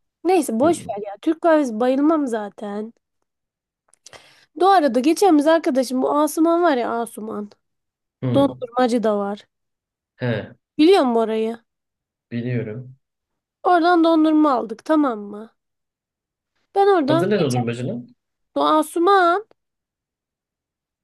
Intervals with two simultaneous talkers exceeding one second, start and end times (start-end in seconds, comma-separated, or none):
none